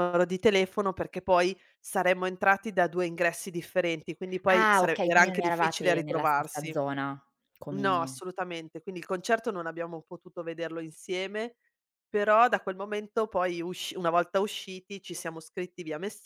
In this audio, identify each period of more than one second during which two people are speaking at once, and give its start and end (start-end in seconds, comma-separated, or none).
4.5-6.8